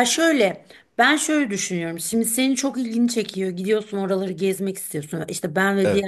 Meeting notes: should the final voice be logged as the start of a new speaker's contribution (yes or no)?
no